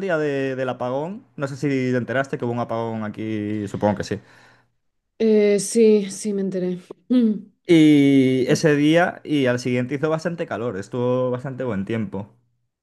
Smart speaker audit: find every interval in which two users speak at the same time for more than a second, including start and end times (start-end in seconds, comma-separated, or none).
none